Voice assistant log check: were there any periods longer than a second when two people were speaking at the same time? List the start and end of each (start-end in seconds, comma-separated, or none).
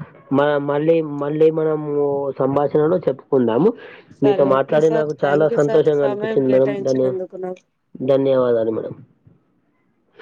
4.3-7.1